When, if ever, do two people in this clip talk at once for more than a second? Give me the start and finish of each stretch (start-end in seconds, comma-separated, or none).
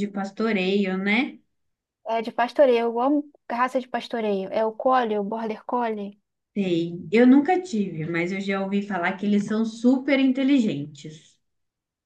none